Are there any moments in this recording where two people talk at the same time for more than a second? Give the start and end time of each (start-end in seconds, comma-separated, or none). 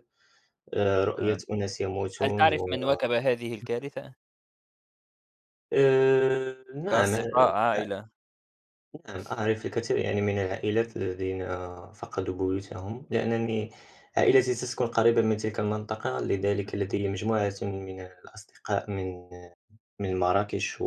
none